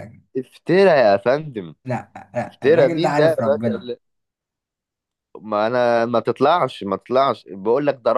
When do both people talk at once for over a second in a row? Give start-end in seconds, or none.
2.5-3.9